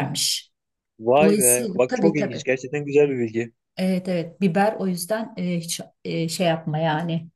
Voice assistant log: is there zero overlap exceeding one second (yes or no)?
no